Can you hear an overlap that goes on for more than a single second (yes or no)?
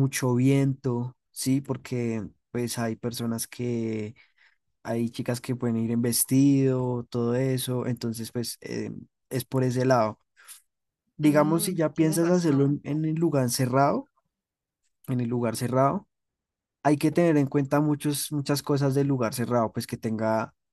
yes